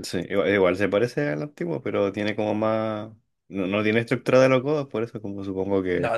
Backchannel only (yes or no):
no